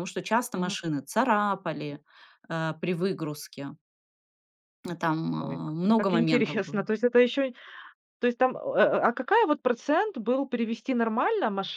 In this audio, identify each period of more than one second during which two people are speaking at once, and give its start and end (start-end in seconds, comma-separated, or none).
5.4-6.8